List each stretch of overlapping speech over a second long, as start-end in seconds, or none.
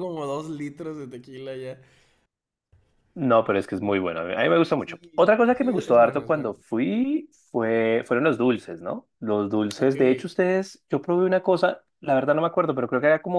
4.8-6.5